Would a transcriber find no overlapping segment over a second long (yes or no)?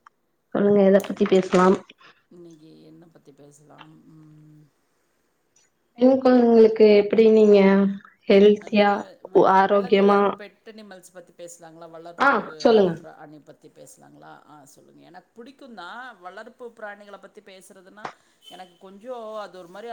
yes